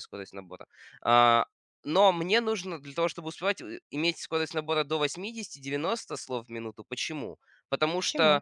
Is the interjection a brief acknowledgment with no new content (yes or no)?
yes